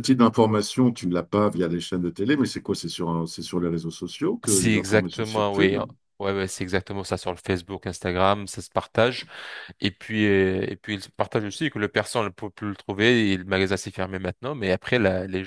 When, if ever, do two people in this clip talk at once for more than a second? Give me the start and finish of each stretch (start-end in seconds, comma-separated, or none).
4.4-5.8